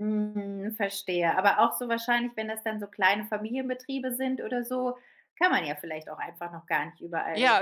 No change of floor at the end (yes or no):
no